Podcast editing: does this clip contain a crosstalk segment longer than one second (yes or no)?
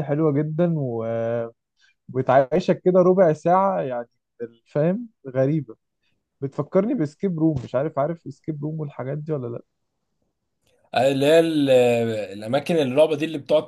no